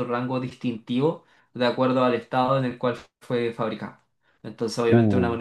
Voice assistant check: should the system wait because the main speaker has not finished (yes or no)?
yes